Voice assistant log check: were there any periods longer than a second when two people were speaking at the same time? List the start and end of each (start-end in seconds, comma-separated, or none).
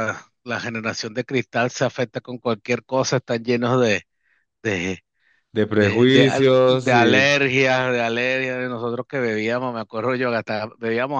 5.8-7.3